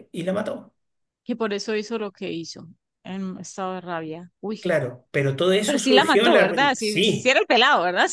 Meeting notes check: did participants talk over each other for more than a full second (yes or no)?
yes